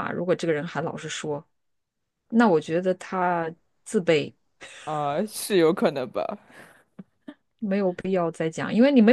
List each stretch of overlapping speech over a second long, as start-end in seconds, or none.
none